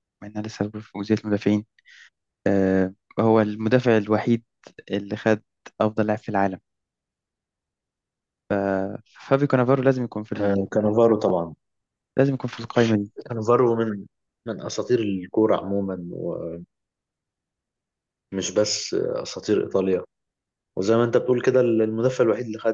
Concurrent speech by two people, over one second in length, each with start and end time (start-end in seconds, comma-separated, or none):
none